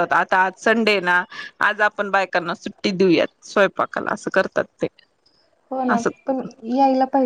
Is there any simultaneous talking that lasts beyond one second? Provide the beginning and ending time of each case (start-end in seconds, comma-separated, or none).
none